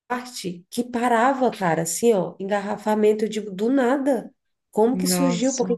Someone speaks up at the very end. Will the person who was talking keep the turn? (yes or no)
yes